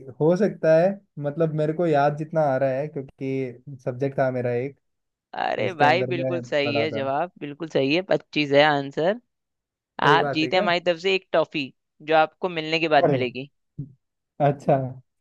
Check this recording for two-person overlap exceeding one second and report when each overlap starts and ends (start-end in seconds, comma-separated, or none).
5.6-7.1